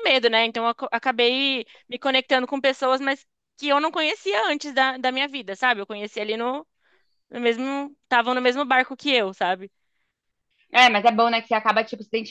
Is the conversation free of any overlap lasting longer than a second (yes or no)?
yes